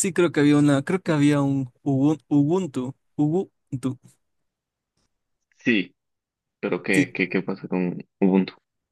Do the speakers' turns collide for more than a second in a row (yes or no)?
no